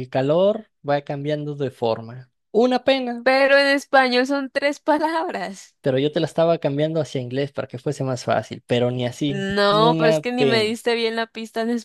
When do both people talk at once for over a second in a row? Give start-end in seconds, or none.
9.2-10.7